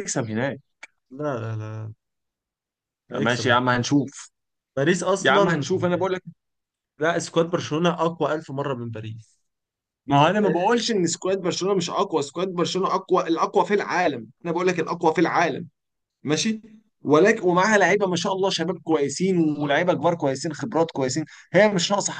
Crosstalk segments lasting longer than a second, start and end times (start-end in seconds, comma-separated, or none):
none